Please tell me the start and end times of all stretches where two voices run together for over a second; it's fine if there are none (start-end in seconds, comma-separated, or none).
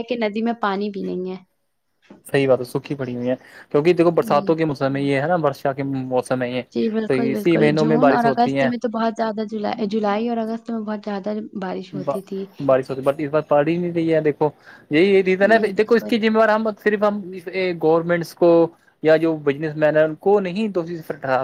7.1-8.7